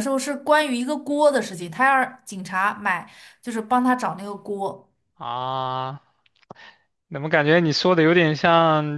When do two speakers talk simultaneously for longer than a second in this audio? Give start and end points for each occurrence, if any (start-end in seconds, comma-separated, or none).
none